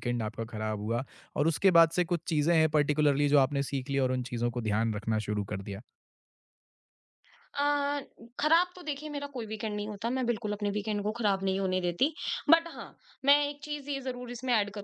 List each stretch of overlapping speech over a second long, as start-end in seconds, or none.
none